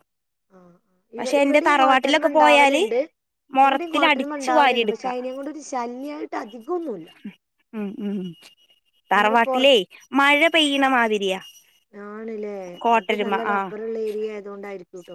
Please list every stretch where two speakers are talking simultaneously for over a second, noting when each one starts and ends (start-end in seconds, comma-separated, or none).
1.4-2.8